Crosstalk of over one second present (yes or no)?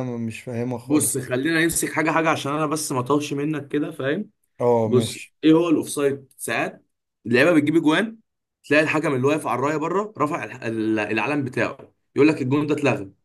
no